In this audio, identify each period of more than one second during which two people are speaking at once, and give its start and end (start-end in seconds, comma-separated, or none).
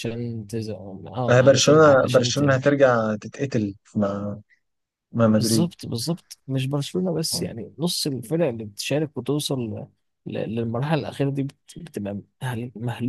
1.3-2.7